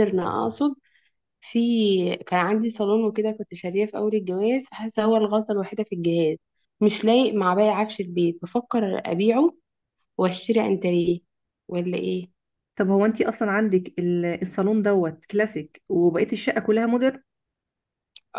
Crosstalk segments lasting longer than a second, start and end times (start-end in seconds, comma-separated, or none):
none